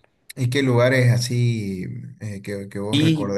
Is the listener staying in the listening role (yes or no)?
no